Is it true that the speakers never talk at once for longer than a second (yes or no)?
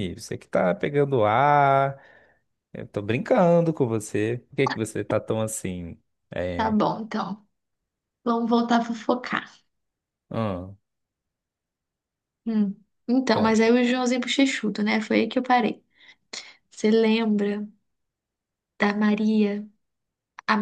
yes